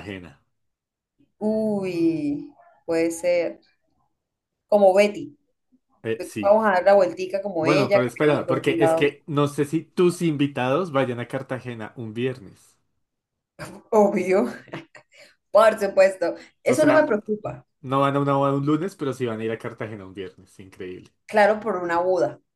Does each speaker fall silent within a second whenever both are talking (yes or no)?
no